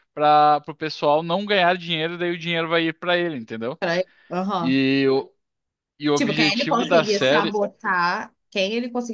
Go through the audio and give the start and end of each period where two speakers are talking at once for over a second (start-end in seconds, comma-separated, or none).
6.1-7.6